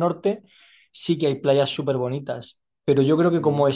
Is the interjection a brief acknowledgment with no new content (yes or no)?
yes